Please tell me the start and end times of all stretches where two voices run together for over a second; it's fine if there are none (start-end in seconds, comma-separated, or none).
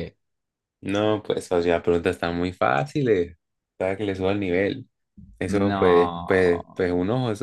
5.4-6.8